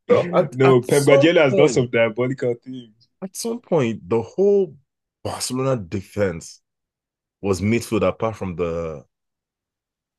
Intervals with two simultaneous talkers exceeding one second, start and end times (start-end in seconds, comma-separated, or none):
0.5-1.9